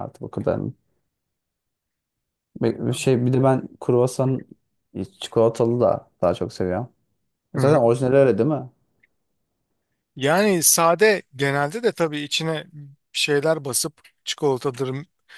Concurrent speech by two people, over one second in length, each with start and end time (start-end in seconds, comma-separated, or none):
none